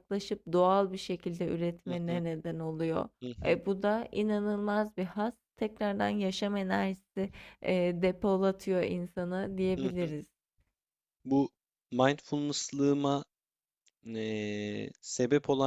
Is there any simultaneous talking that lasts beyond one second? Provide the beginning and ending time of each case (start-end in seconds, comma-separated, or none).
none